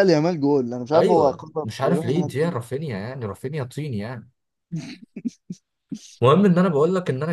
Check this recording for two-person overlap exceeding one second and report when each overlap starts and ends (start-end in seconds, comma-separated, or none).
0.9-2.6